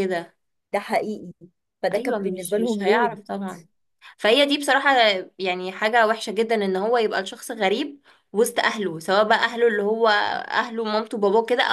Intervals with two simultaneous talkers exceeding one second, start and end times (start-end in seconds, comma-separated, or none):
1.9-3.2